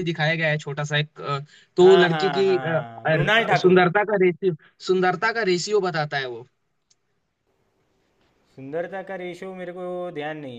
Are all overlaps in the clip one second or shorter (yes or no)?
no